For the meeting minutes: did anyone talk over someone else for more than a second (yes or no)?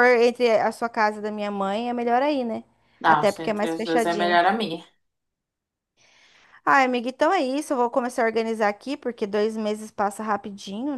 yes